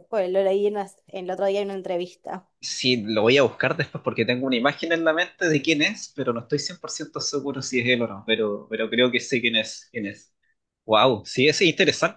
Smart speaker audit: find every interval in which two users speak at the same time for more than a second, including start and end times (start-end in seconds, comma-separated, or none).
none